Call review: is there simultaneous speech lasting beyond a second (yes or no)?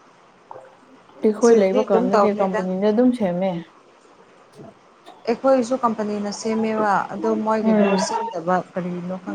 yes